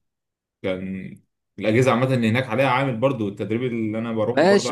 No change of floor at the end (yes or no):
no